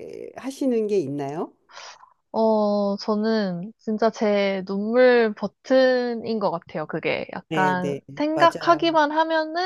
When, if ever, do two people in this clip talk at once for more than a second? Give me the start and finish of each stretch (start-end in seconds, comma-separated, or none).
7.5-8.9